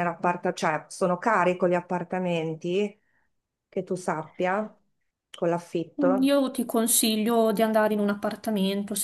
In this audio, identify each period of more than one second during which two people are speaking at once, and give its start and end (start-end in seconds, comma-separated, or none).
none